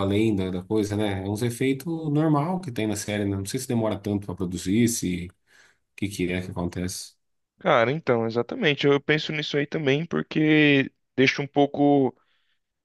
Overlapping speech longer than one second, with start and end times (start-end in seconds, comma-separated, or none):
none